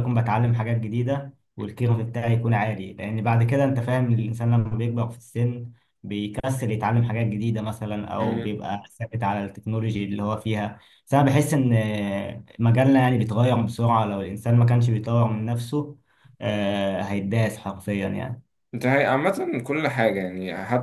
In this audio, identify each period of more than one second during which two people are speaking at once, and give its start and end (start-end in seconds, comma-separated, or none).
none